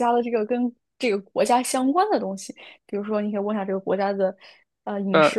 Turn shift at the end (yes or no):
no